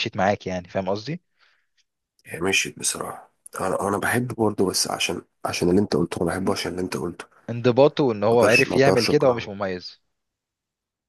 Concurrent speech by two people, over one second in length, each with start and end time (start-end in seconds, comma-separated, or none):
8.3-9.5